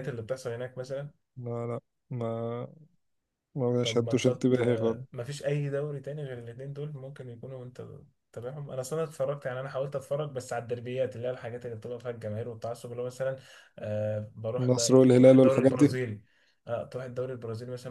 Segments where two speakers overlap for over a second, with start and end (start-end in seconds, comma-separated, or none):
3.8-5.0, 14.6-15.9